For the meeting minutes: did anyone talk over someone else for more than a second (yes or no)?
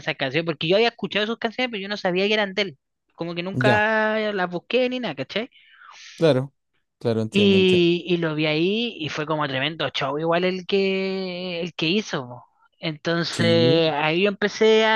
no